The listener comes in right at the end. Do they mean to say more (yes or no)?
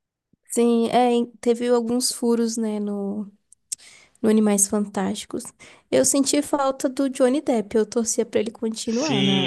yes